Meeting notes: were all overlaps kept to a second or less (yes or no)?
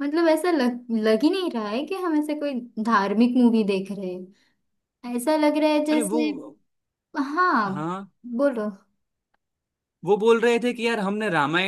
yes